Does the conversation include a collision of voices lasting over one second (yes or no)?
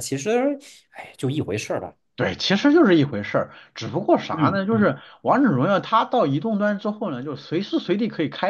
no